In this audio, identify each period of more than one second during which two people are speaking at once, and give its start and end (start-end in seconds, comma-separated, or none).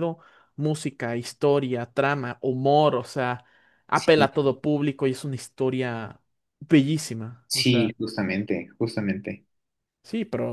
none